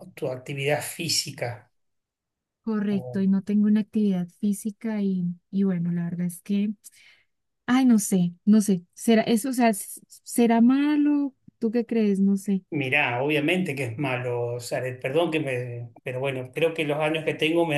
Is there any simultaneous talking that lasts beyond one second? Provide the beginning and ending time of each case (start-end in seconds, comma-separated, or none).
none